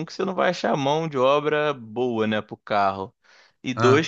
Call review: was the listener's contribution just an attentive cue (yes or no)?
yes